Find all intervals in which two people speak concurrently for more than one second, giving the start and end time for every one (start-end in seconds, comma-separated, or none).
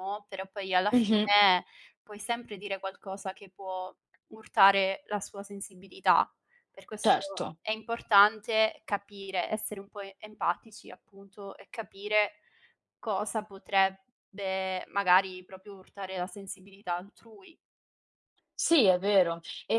none